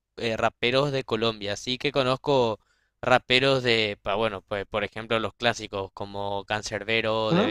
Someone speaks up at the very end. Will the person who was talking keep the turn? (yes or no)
yes